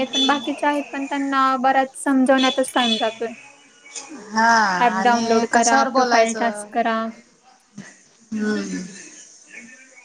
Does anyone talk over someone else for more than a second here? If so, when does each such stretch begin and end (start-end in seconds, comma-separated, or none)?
5.0-6.7